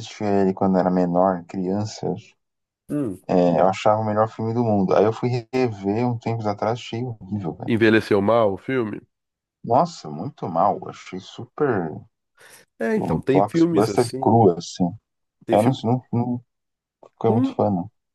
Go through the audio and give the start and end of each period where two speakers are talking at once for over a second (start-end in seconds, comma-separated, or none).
13.0-14.3